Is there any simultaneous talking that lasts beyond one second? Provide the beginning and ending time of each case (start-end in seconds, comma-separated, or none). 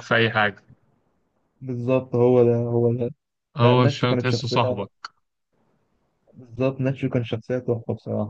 3.6-4.9